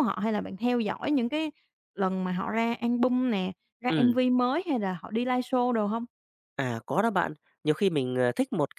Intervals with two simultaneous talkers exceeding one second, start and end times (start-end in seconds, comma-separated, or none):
none